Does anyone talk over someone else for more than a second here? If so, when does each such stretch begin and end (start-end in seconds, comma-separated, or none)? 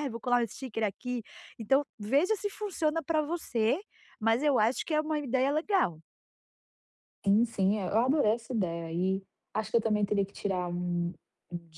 none